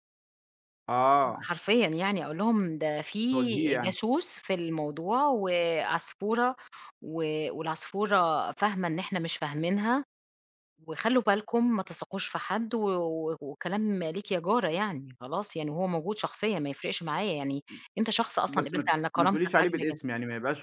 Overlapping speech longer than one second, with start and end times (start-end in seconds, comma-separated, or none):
18.5-20.0